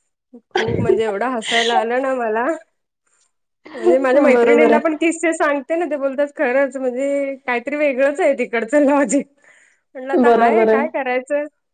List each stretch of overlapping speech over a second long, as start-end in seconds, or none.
0.6-1.9